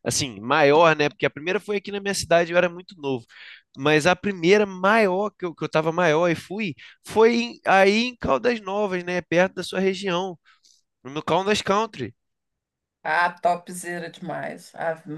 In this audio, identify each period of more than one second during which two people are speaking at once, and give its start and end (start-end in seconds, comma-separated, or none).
none